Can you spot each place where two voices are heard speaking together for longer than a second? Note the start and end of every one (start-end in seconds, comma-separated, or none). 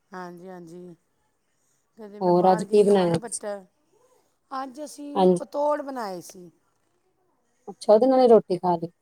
2.2-3.4